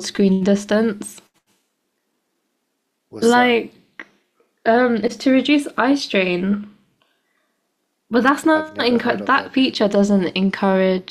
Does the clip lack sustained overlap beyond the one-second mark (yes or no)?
no